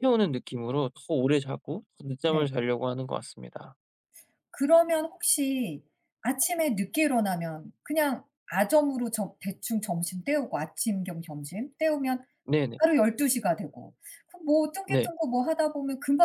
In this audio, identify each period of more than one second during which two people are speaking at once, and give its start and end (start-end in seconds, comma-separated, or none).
none